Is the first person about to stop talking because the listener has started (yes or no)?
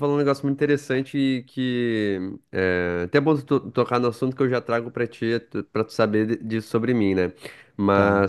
no